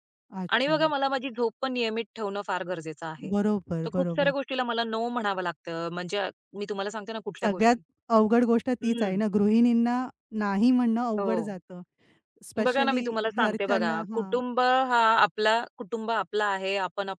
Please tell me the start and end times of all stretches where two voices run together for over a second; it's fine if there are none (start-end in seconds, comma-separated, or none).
12.7-14.4